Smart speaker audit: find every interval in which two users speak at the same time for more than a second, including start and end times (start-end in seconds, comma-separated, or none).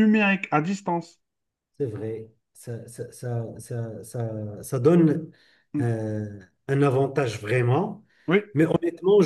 none